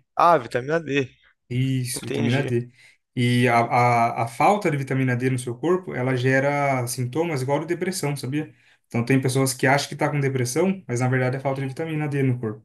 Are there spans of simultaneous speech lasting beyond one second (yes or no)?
no